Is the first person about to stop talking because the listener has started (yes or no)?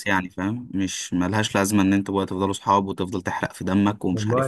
yes